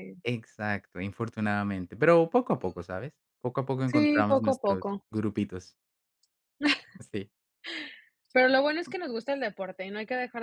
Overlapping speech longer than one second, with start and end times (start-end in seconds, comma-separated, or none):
3.9-5.0